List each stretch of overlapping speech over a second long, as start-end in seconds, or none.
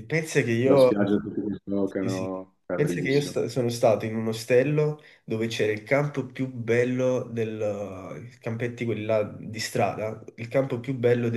2.0-3.4